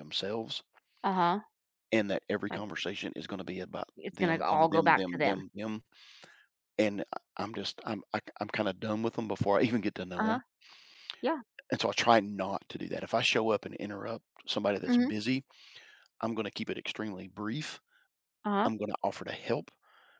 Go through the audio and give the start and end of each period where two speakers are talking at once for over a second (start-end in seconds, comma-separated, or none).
4.0-5.4